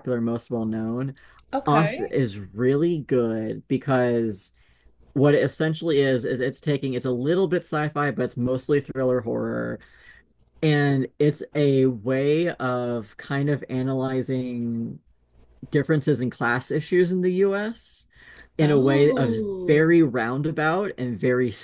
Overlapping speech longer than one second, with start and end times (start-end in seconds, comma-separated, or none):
18.6-20.0